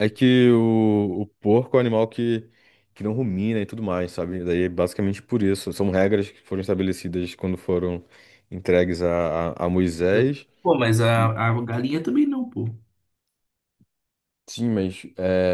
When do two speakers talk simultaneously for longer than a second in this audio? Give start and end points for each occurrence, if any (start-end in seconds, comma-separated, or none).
none